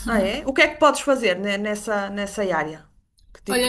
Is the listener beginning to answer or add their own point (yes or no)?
yes